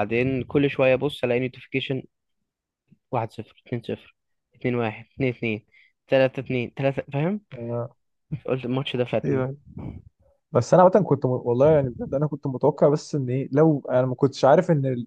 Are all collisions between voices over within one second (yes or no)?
yes